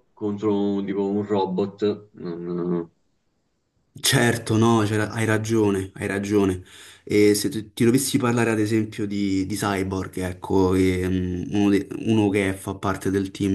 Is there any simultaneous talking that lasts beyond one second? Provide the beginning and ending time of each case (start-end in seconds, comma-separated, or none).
none